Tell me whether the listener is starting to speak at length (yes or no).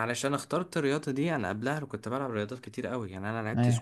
no